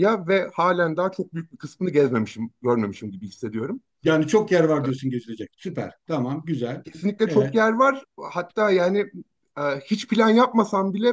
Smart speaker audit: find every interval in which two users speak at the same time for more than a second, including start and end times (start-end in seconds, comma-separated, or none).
none